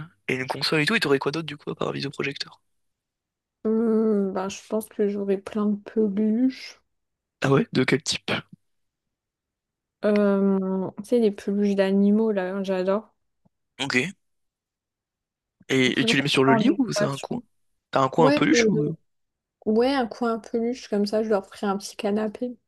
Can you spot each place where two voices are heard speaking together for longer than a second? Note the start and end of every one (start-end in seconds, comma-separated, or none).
15.8-17.4